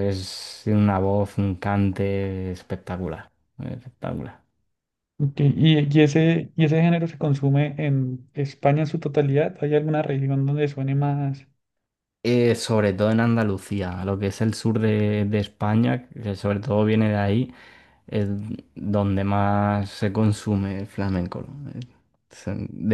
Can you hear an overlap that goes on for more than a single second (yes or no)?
no